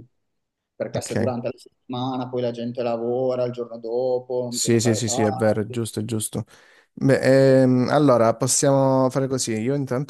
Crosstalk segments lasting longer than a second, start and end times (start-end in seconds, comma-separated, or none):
4.5-5.8